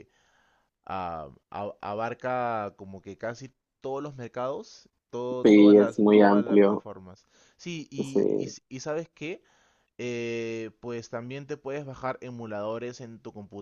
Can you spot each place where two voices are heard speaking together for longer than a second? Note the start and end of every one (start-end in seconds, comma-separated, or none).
5.4-6.9